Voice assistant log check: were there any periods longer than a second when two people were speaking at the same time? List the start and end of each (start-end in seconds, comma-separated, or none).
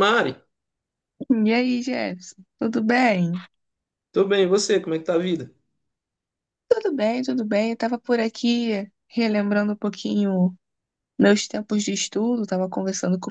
none